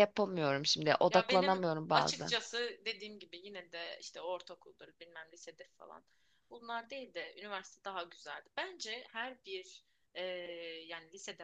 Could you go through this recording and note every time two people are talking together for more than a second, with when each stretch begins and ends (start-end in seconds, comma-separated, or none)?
1.1-2.4